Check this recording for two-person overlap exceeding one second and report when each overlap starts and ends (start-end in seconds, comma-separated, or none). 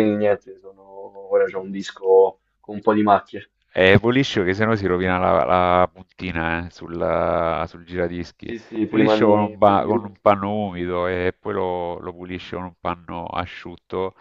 8.4-9.9